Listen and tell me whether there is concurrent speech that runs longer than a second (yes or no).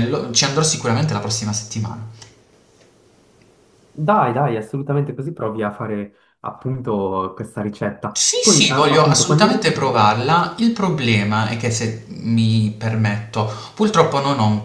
yes